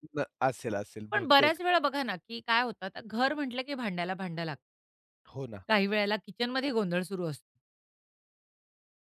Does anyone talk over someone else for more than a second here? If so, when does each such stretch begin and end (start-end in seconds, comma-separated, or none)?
none